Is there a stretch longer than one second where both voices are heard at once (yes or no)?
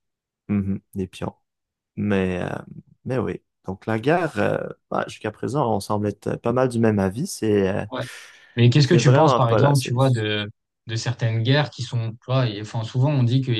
yes